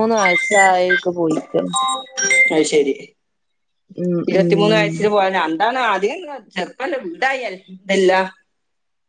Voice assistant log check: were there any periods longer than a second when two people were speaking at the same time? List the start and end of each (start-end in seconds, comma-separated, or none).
none